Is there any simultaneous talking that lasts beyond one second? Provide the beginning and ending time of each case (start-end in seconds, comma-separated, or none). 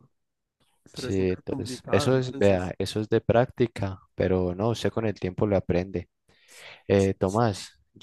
0.9-2.7